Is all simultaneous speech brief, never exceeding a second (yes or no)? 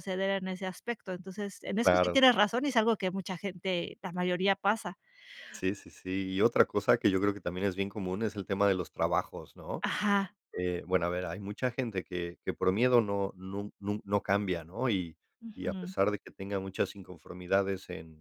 yes